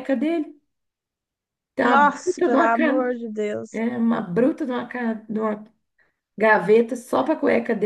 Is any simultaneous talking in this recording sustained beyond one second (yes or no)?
yes